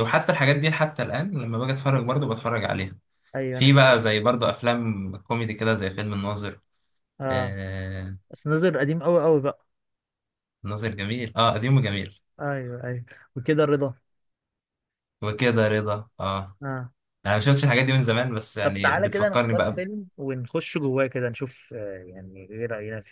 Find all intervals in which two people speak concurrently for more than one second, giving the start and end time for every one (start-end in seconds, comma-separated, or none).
18.6-19.8